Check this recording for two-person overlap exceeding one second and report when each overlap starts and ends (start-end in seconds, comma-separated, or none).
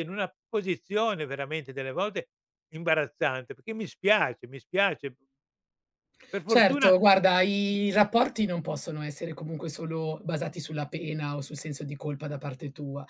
none